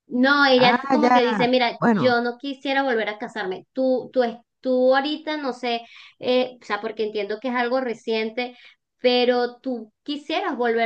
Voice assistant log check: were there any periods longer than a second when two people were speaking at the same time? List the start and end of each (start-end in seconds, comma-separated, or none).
0.6-2.2